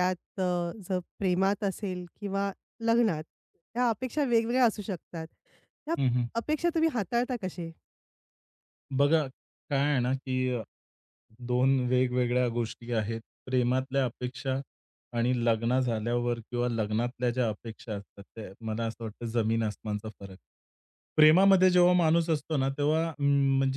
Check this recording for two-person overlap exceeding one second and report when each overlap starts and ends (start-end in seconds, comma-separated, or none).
none